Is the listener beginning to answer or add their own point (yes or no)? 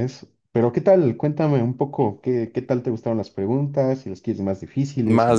yes